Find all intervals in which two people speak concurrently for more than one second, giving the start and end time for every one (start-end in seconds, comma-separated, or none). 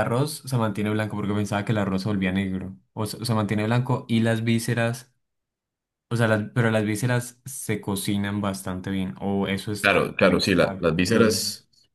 9.8-11.4